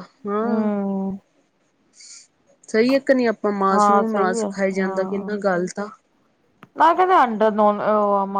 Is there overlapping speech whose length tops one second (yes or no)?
yes